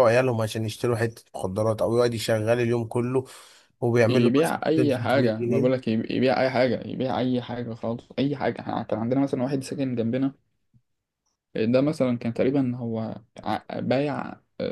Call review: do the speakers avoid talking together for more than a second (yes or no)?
no